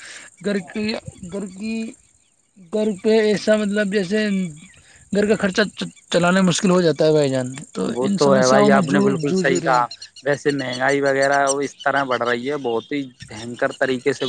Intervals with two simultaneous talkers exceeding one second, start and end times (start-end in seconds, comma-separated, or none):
8.0-9.8